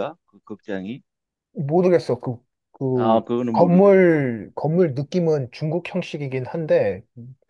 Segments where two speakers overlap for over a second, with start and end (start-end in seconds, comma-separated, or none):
2.9-4.2